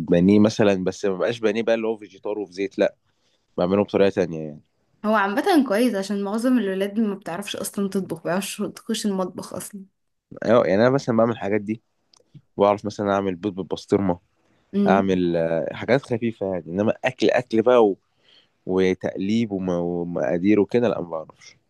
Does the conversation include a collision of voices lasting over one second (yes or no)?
no